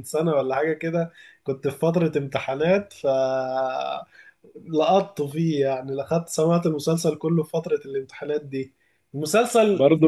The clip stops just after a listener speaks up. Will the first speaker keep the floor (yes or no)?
yes